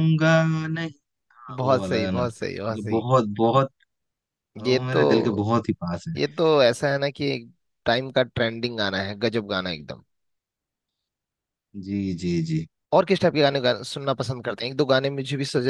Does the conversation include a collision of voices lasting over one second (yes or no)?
yes